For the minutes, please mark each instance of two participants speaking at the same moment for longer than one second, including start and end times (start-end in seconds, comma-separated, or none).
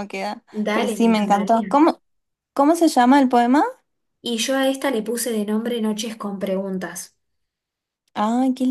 0.5-1.8